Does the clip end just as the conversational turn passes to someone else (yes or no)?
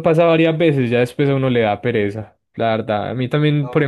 yes